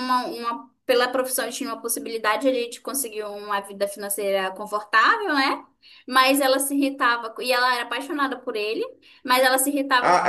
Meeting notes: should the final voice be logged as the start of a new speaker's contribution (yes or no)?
yes